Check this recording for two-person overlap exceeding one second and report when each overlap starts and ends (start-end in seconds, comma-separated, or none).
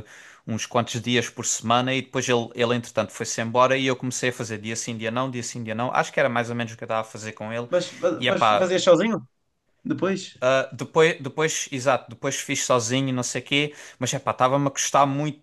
none